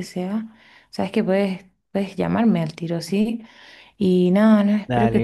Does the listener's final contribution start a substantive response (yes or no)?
no